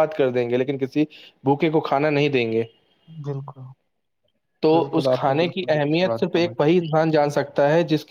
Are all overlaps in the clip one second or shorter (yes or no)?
no